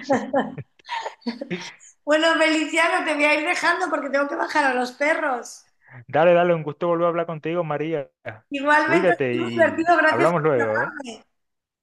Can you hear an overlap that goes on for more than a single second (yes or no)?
yes